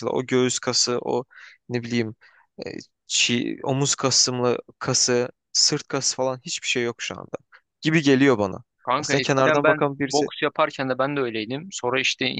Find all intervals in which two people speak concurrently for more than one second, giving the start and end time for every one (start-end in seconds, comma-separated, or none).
8.8-10.3